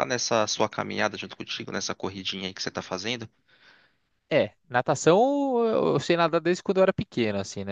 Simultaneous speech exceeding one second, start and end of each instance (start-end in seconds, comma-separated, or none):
none